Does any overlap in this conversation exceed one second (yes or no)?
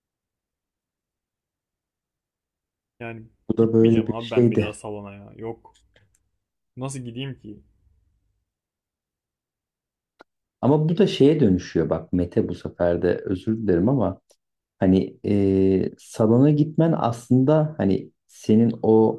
yes